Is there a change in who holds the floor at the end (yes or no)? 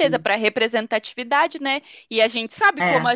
no